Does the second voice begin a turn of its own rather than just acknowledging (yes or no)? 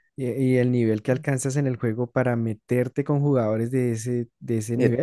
yes